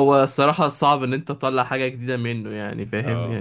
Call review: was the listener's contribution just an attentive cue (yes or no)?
yes